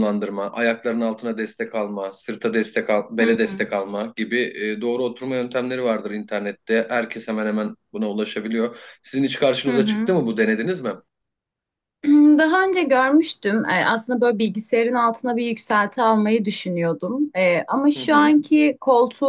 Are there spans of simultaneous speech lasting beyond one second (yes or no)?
no